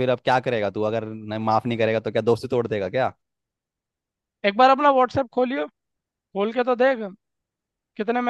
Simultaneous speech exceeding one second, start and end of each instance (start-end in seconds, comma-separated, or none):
none